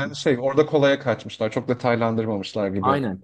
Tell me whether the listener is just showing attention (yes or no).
no